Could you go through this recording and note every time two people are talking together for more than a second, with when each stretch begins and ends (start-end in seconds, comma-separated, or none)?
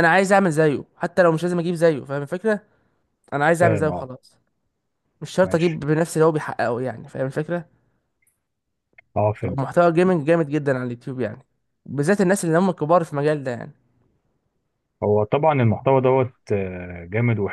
none